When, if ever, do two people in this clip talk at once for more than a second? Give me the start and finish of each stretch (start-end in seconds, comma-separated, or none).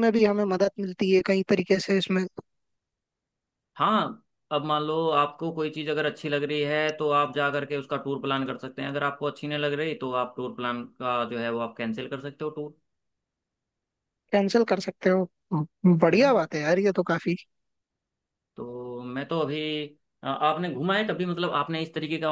none